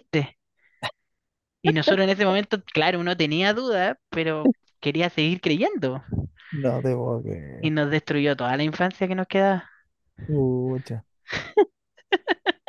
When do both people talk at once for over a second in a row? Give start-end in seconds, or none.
none